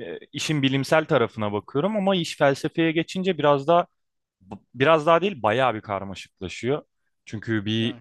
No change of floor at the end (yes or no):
yes